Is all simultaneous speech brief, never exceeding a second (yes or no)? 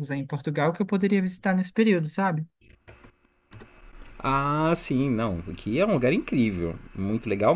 yes